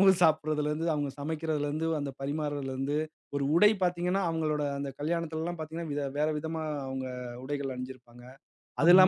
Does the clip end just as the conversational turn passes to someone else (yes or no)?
no